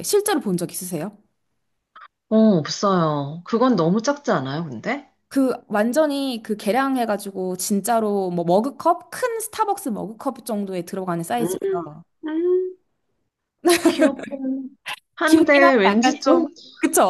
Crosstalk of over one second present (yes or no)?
yes